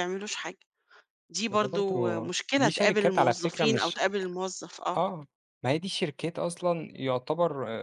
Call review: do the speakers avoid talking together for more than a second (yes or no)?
no